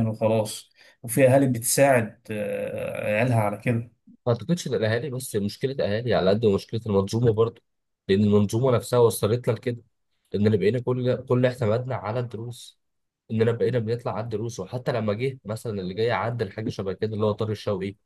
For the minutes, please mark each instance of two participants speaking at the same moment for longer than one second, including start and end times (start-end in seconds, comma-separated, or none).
none